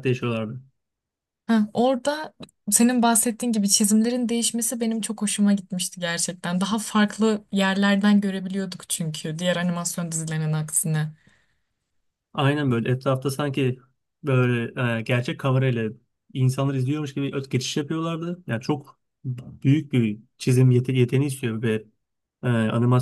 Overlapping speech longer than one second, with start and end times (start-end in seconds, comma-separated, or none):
none